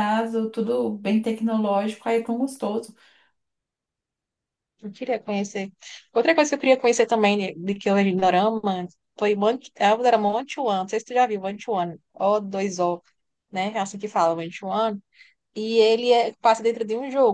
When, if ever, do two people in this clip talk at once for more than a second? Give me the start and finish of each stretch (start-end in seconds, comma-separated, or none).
none